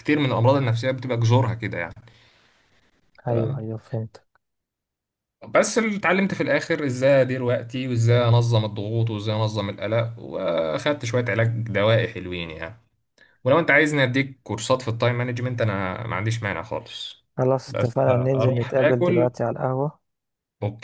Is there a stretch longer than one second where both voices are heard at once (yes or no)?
yes